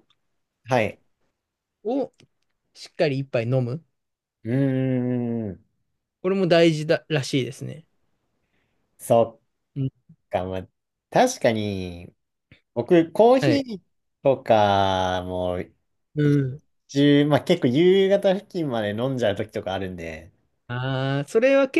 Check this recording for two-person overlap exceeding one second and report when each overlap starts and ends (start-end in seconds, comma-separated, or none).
none